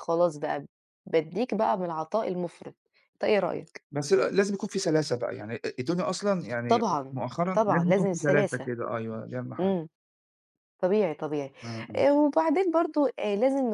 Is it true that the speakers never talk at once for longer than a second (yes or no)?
no